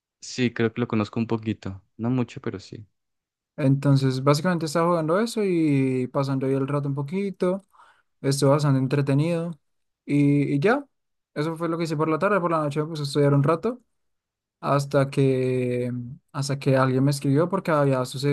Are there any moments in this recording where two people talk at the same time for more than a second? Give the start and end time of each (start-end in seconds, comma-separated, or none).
none